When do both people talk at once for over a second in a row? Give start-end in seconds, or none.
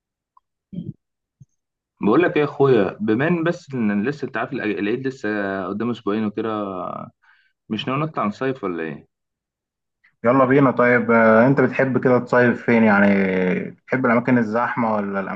none